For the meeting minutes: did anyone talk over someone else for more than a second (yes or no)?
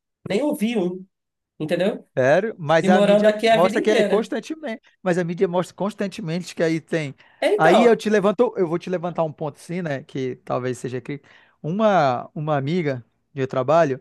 yes